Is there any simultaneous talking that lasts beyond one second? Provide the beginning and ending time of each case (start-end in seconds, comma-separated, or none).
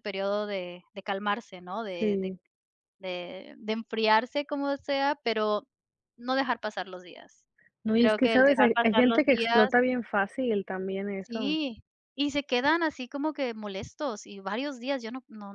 7.9-9.7